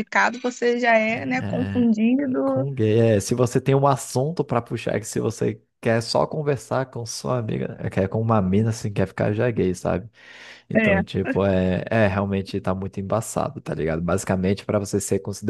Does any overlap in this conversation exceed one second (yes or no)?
no